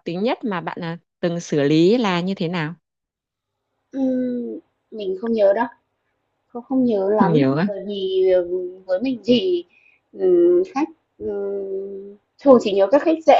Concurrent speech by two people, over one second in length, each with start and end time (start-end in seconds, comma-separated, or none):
none